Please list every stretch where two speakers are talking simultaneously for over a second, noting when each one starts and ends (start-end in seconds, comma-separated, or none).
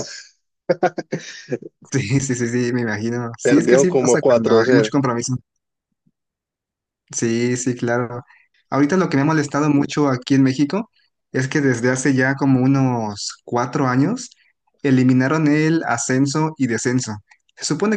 3.4-4.9